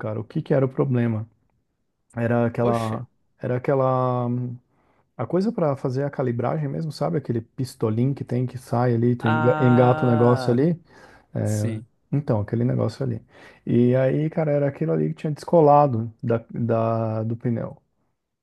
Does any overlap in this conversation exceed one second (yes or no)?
yes